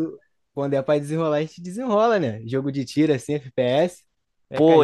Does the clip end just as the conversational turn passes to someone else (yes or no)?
yes